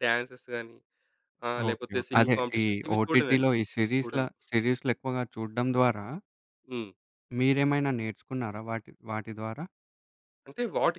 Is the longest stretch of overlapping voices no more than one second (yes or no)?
no